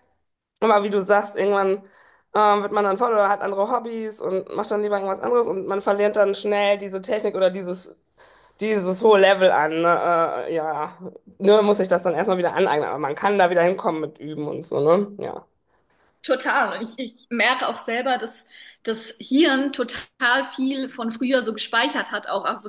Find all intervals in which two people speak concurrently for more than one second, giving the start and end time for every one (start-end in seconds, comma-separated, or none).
none